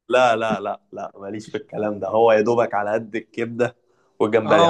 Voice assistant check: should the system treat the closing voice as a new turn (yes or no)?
yes